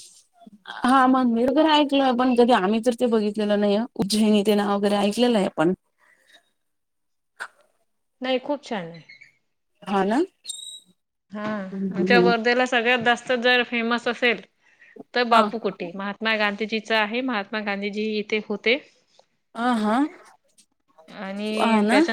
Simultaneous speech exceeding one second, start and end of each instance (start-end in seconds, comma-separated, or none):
none